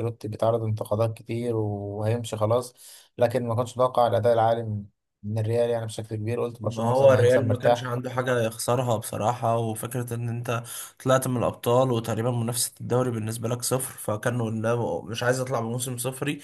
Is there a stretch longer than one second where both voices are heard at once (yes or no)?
yes